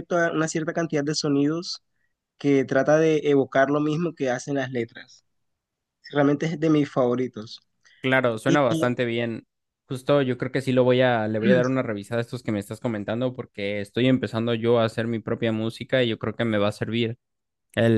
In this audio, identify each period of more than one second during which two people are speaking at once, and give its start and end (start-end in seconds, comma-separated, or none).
none